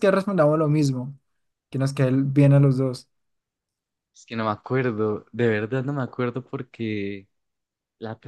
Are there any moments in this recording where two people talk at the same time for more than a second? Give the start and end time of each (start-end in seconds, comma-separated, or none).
none